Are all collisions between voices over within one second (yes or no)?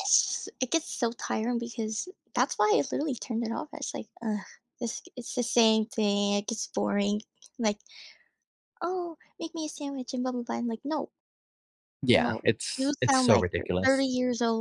no